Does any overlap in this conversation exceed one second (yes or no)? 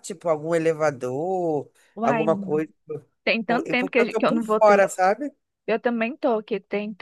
yes